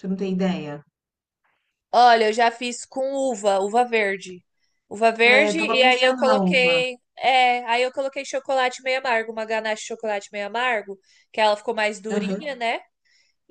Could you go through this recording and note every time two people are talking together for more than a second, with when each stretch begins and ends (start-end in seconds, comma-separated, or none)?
5.3-6.8